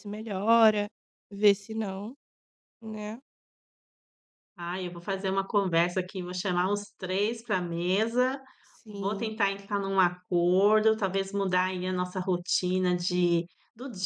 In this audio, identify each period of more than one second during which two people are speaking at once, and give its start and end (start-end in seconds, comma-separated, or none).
none